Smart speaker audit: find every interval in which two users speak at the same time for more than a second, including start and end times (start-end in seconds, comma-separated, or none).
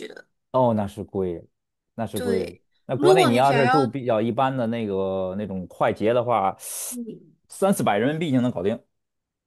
2.1-3.9